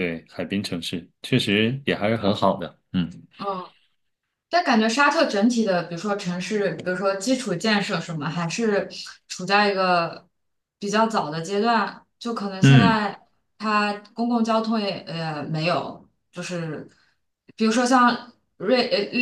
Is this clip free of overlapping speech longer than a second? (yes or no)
yes